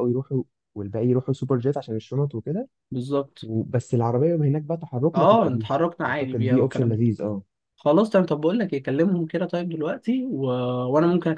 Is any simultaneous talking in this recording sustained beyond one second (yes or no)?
yes